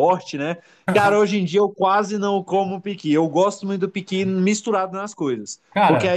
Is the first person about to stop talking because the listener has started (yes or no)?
no